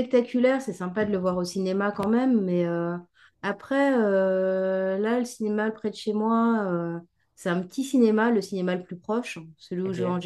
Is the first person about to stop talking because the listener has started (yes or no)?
no